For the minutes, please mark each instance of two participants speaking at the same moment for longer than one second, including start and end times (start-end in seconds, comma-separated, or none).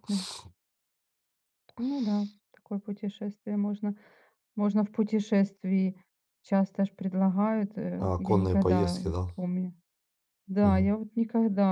8.0-9.3